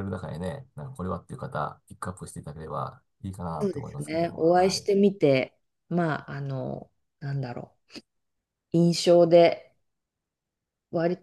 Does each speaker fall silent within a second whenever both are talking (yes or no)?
no